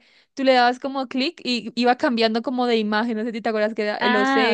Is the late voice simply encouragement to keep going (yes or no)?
no